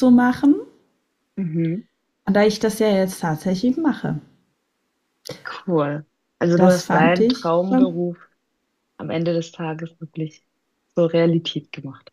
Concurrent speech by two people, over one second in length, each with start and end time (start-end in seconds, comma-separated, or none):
6.6-7.9